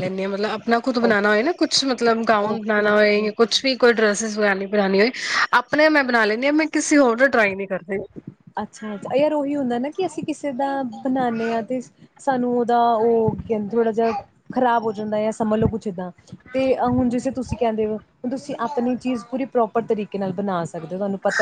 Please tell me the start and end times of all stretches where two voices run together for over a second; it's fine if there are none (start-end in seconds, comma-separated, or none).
2.3-3.6